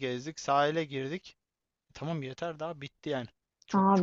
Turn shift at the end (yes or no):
yes